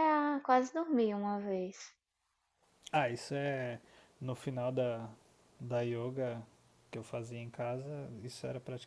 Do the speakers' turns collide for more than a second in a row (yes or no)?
no